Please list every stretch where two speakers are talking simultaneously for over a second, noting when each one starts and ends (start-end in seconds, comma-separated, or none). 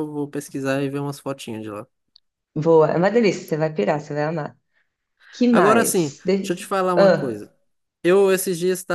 5.5-7.5